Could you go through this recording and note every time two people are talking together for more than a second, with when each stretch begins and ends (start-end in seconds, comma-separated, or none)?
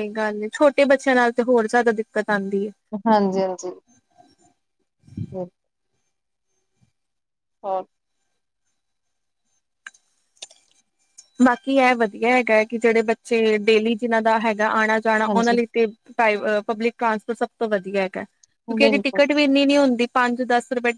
none